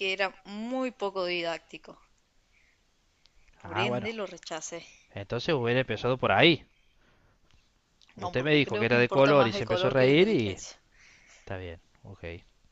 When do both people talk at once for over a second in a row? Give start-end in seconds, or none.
8.2-10.6